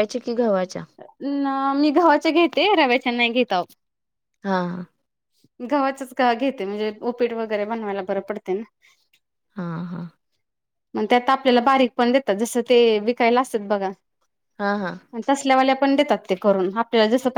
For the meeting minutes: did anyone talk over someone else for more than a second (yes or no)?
no